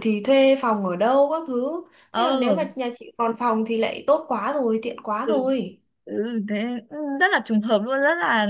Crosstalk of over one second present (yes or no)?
no